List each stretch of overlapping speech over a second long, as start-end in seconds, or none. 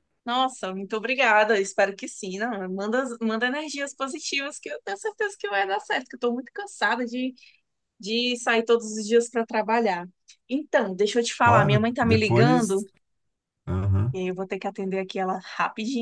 11.4-12.8